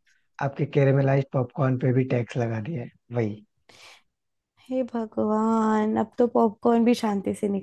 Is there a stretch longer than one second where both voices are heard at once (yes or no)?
no